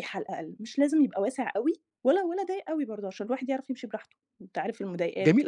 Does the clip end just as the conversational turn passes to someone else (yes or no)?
yes